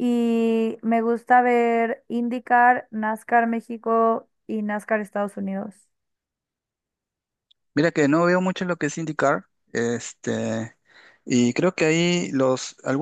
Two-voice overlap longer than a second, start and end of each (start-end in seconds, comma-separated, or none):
none